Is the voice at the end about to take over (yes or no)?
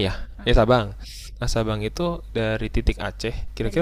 yes